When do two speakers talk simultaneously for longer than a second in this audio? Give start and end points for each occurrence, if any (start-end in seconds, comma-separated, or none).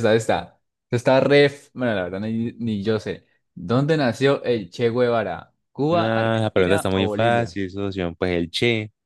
5.9-7.6